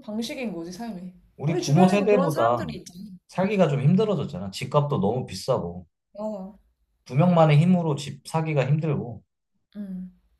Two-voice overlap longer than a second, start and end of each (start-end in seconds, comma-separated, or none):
1.4-2.7